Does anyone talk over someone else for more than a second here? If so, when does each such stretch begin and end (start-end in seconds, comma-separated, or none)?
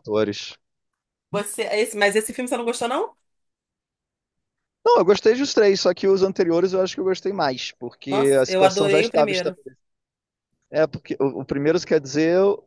8.1-9.6